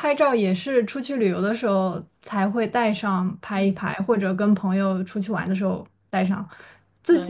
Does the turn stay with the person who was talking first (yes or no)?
yes